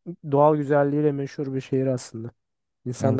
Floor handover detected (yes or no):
yes